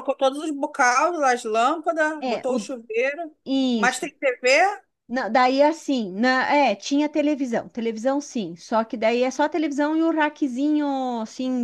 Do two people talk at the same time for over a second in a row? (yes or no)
no